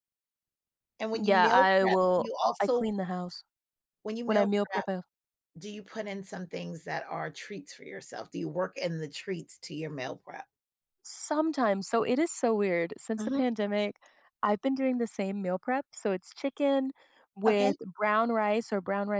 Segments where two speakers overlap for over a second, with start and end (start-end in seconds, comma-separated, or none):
1.2-2.9